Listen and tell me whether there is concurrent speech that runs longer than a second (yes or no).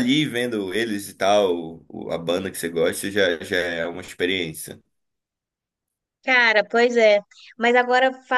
no